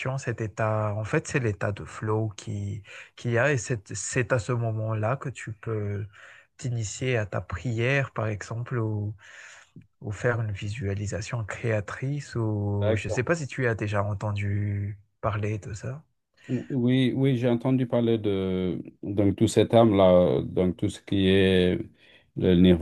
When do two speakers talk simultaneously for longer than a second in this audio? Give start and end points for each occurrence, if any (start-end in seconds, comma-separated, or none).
none